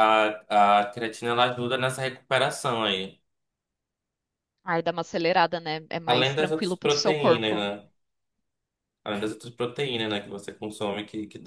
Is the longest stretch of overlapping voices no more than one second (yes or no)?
no